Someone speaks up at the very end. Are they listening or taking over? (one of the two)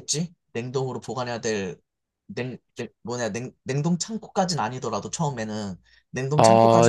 taking over